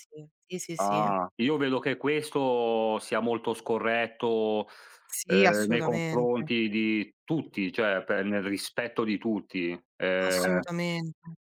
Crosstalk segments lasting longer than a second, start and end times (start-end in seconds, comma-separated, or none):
5.2-6.5